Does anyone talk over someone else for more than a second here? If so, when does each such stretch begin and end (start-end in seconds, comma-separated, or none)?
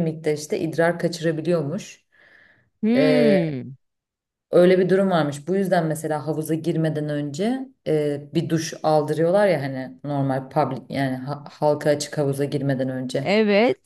none